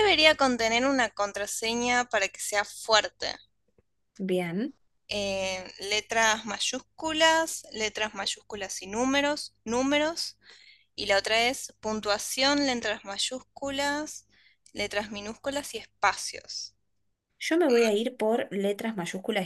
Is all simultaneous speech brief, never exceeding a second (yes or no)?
yes